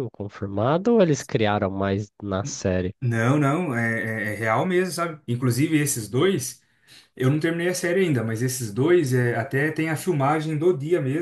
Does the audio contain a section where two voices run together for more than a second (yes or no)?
no